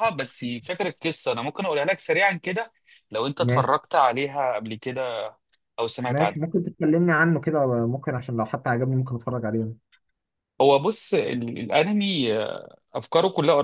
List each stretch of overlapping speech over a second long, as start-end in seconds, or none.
none